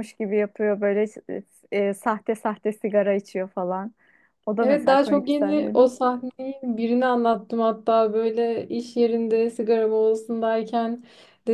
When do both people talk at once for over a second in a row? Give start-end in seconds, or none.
4.6-5.8